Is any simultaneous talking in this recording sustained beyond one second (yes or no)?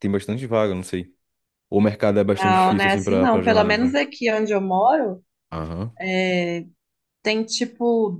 yes